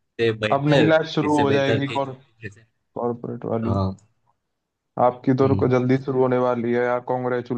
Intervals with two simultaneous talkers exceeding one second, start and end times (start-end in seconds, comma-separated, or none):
0.6-2.1